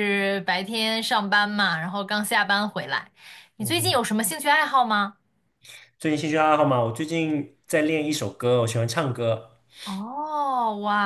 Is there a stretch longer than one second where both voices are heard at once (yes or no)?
no